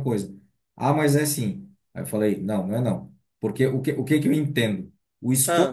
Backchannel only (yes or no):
yes